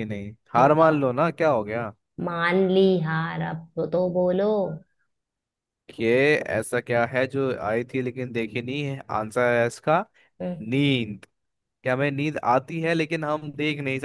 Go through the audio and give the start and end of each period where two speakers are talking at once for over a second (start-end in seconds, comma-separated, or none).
none